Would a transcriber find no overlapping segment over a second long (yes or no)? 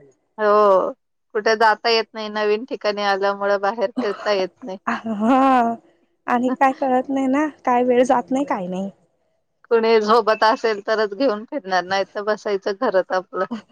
yes